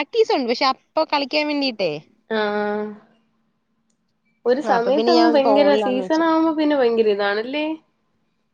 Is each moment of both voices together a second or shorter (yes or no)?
no